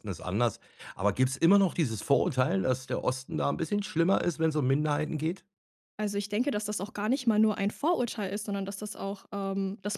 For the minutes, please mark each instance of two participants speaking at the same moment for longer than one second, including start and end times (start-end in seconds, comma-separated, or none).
none